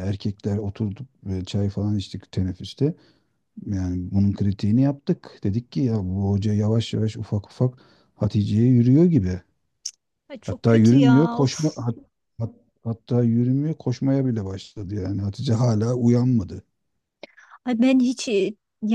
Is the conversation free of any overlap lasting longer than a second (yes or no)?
no